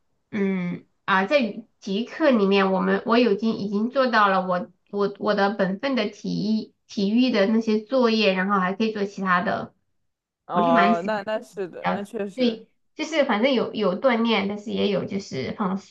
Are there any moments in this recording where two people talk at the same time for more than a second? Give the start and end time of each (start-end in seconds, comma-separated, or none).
10.5-12.6